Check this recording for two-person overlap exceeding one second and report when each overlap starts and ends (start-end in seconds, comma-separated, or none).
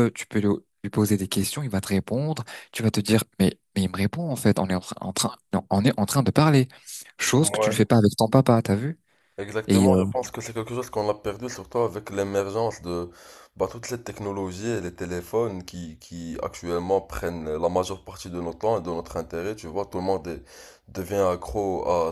none